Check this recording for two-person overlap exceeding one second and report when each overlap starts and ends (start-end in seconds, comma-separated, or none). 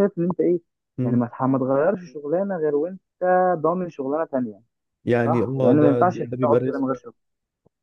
5.2-6.8